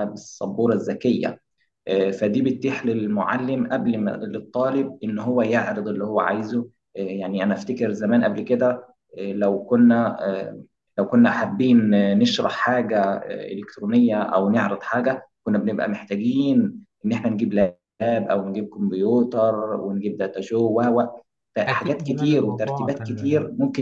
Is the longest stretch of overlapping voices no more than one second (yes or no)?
no